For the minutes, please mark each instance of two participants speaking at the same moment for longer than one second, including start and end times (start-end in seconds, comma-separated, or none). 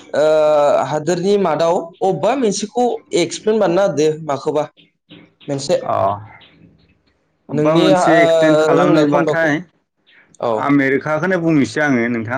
7.6-9.5